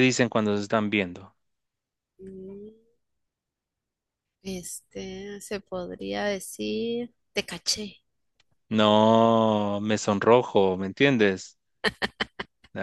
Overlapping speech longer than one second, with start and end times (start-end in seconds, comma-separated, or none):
none